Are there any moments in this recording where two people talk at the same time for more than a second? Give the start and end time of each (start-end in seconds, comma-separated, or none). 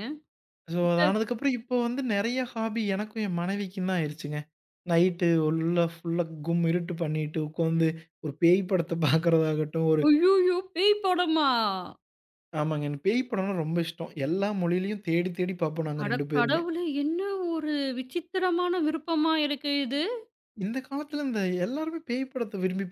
none